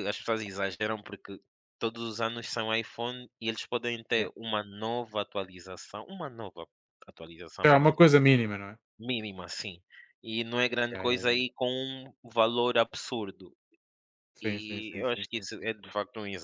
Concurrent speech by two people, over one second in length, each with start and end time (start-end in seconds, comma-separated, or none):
14.4-15.9